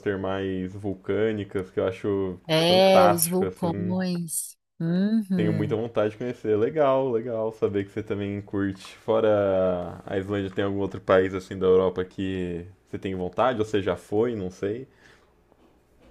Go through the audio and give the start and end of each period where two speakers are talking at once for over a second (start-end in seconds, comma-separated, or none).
2.5-4.0